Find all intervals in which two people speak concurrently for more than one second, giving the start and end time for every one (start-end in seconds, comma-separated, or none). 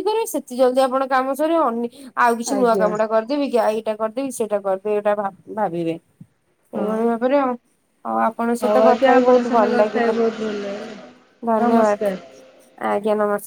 8.6-10.2